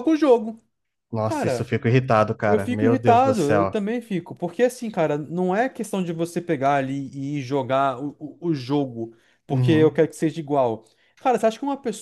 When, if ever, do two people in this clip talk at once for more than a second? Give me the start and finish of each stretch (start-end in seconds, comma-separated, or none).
2.5-3.8